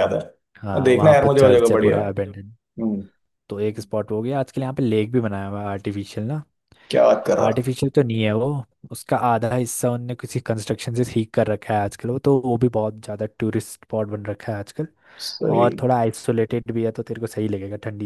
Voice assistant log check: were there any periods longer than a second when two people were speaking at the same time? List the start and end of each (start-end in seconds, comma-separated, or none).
0.6-2.0